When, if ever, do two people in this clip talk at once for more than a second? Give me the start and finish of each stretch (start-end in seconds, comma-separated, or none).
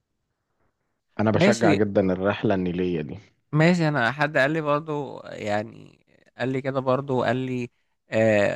none